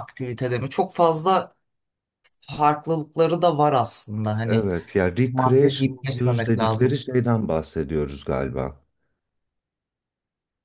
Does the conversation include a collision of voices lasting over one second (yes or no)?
yes